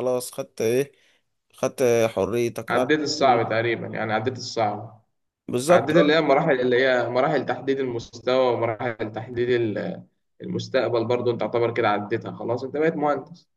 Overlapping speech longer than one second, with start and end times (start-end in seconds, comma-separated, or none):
none